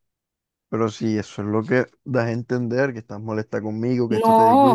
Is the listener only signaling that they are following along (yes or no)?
no